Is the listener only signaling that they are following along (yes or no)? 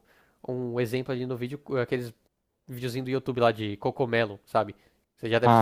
yes